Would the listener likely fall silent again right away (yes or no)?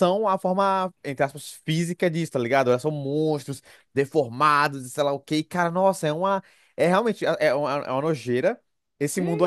no